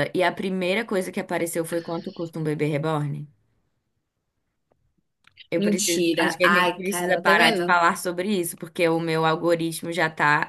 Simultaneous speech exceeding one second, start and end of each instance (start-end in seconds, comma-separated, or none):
5.6-7.8